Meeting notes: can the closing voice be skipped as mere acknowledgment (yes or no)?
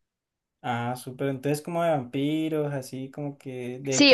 no